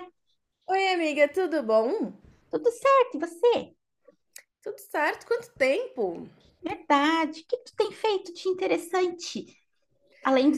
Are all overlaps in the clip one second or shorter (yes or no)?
yes